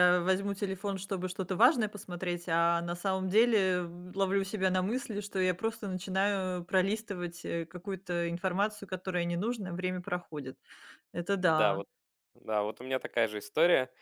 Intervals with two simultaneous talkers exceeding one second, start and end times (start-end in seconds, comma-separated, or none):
none